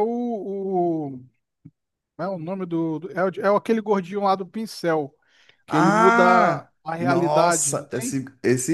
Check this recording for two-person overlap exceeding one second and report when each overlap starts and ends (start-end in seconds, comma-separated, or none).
5.7-8.2